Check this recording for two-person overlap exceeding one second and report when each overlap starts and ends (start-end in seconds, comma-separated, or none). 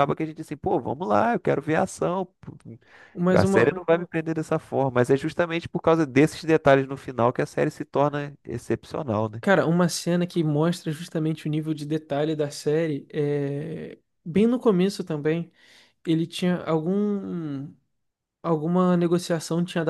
none